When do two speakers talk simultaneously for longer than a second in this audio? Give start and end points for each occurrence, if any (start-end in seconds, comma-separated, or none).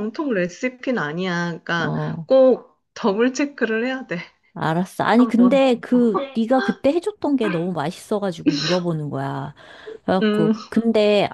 none